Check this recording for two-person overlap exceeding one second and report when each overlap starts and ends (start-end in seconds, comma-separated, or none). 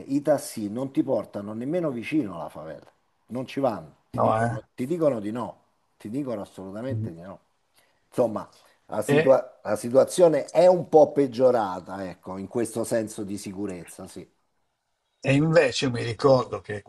none